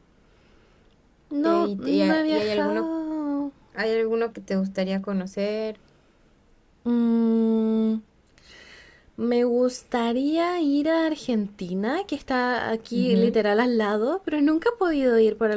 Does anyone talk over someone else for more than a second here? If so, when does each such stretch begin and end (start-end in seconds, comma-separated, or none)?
1.4-2.9